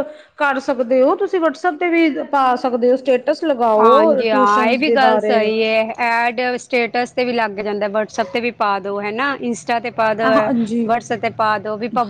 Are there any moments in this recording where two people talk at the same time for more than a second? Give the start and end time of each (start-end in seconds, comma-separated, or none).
3.8-5.4